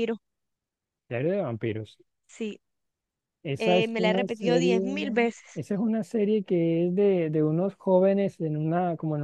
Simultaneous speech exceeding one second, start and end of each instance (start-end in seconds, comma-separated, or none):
3.6-4.8